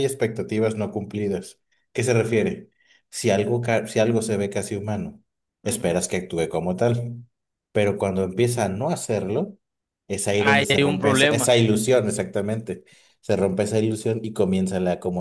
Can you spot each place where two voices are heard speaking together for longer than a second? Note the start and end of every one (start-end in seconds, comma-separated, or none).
10.3-11.5